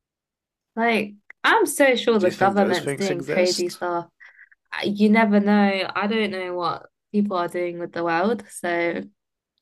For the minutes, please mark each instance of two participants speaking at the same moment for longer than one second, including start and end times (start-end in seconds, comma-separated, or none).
2.1-3.8